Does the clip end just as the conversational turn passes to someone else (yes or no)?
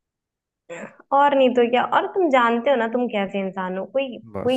no